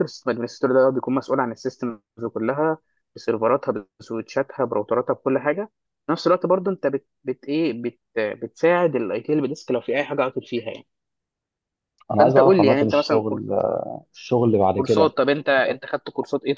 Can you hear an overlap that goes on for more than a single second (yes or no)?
yes